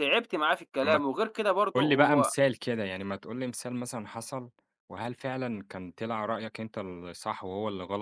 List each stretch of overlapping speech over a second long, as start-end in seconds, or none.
none